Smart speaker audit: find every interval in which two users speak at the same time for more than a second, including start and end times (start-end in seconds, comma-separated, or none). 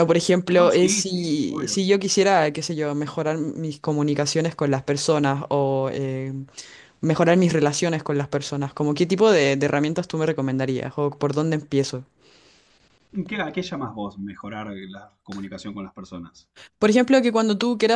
0.5-1.8